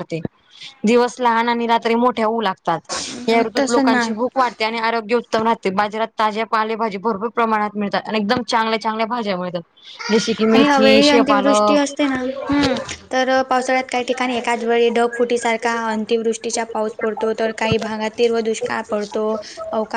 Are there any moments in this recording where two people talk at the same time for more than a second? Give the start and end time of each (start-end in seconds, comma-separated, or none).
10.5-11.8